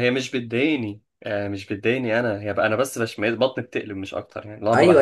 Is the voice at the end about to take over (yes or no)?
yes